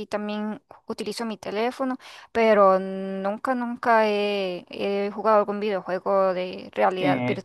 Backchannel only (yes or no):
no